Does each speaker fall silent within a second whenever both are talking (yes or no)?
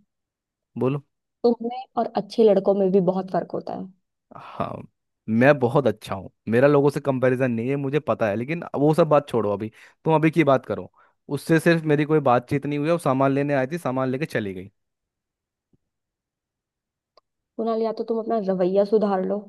yes